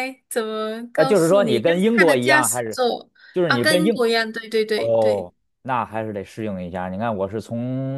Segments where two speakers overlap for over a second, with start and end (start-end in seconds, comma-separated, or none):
0.9-2.8